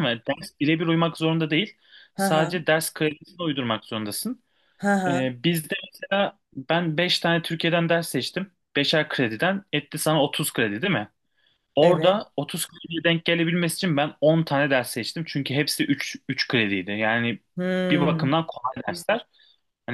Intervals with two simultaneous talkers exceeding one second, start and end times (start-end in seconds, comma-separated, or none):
none